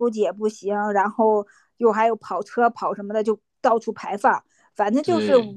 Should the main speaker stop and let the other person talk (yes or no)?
no